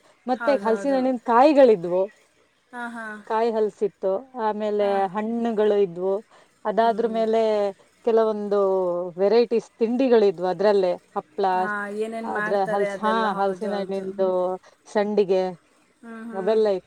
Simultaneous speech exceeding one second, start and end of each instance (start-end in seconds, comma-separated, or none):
12.3-14.3